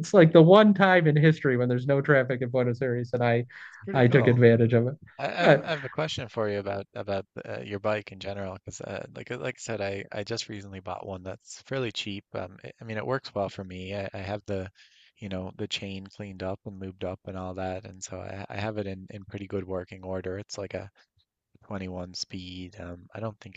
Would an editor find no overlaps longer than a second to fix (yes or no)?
yes